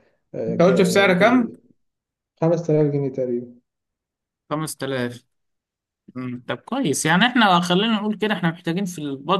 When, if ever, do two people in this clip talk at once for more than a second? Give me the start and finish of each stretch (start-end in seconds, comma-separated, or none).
none